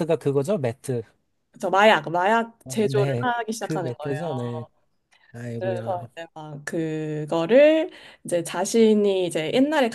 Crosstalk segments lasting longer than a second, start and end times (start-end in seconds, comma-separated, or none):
2.6-4.2